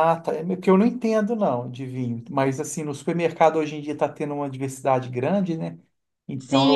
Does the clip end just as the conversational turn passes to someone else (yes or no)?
yes